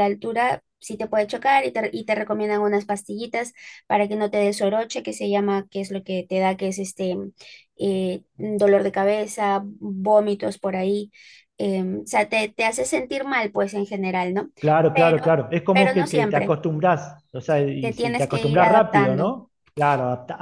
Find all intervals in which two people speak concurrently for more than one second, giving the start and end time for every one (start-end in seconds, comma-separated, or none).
14.9-16.6, 17.8-19.4